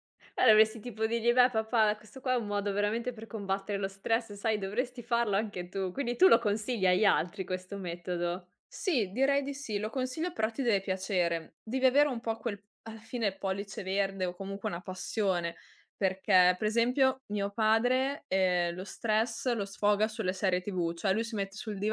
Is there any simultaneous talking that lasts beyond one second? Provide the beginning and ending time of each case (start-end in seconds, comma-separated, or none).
none